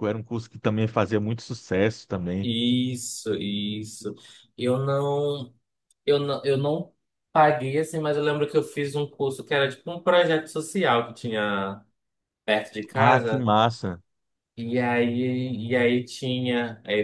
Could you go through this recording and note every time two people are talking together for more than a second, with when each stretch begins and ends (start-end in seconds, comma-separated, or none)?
none